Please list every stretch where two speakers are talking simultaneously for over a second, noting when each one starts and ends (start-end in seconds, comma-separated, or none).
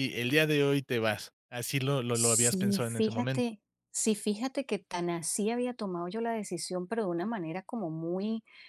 2.1-3.5